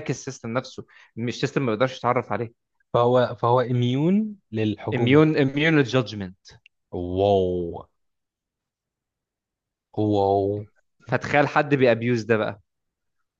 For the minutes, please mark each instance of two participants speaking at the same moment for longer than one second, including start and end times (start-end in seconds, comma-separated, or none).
none